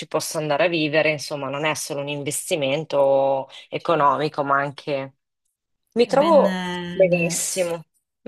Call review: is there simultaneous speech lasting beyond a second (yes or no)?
yes